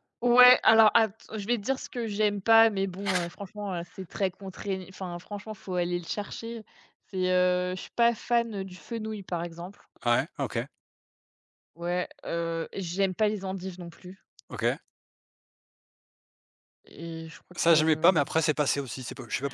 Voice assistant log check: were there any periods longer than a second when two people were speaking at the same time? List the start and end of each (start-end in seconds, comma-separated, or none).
none